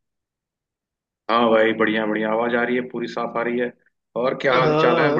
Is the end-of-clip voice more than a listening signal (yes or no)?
yes